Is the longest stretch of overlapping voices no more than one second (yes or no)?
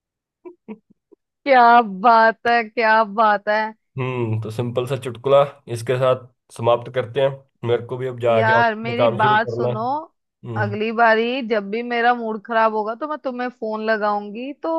no